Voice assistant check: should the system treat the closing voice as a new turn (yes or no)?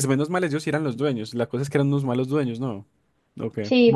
yes